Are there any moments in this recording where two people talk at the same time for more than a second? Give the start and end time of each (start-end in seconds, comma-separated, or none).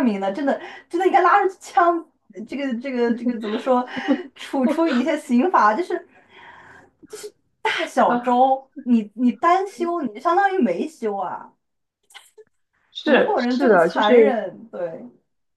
13.0-14.4